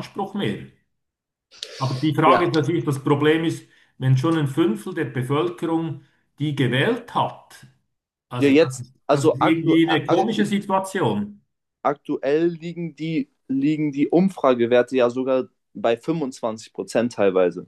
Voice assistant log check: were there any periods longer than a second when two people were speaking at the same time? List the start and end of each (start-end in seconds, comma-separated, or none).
8.4-10.4